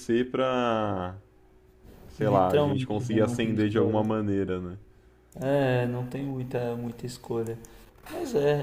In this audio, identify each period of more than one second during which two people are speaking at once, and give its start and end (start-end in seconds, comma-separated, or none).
2.2-4.0